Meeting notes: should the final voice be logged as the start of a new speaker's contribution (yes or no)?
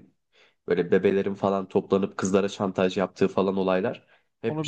no